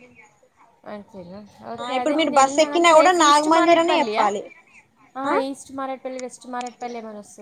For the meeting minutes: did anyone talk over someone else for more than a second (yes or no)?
yes